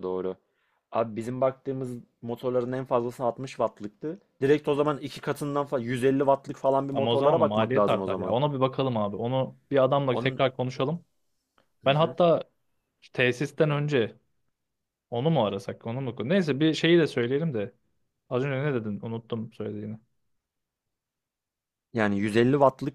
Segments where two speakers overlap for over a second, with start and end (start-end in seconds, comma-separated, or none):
6.9-8.4